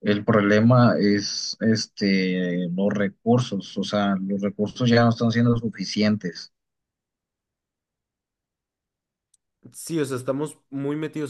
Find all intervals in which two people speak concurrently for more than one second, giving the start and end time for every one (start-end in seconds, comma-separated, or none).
none